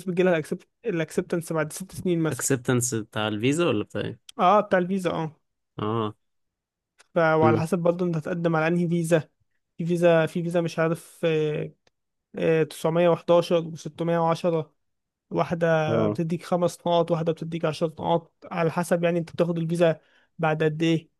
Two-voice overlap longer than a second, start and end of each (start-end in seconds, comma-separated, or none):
none